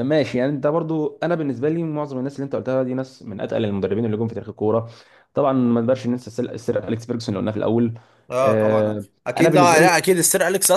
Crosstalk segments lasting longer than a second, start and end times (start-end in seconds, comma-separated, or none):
8.4-9.9